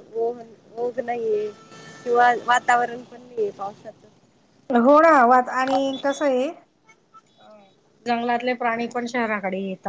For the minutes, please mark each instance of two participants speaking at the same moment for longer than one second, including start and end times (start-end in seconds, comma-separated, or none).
none